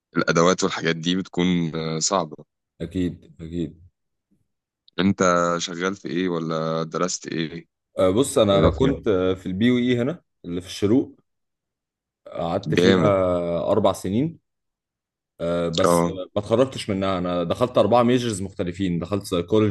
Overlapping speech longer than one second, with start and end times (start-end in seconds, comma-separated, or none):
none